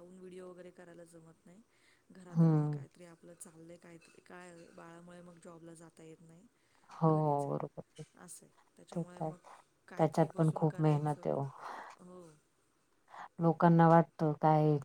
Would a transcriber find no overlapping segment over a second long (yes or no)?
no